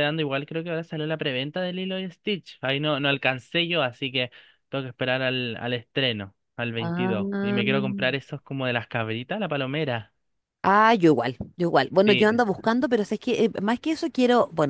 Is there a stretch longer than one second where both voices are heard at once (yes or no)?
no